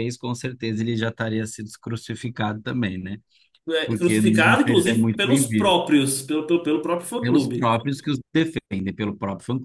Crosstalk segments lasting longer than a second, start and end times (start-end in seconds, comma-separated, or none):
3.9-5.8